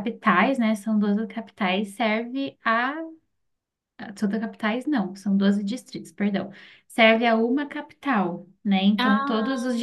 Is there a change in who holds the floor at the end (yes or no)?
no